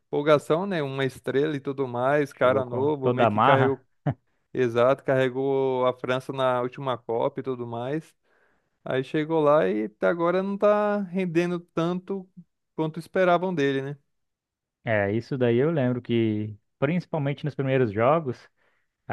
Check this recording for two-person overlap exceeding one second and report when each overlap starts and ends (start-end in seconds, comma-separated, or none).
2.4-3.8